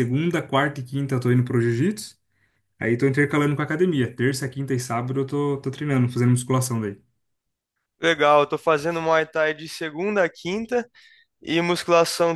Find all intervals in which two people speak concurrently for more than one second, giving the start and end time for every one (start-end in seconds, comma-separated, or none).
none